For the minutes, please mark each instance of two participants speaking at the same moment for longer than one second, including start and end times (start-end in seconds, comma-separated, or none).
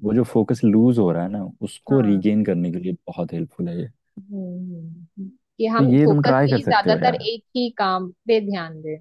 5.8-7.2